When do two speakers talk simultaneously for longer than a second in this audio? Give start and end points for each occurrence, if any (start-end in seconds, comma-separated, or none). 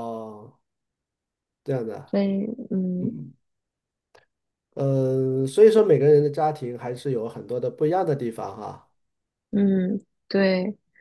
none